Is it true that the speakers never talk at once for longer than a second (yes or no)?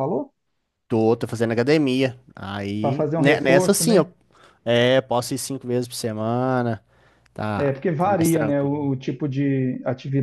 no